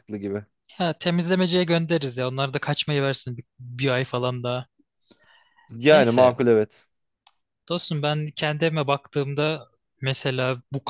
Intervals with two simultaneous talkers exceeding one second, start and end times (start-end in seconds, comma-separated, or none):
none